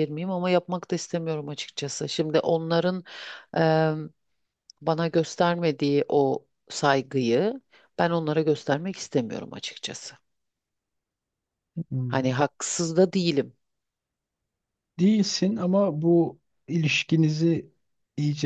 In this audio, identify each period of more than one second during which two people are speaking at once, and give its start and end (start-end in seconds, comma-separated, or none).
none